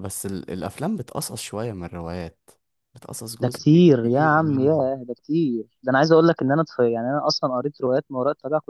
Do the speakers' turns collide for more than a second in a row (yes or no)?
yes